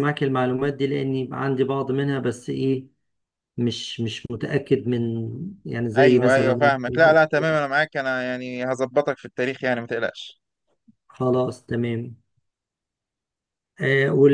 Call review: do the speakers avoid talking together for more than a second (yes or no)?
no